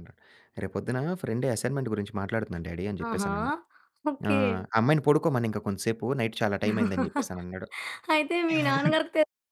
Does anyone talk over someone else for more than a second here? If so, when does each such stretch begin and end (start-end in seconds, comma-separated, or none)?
none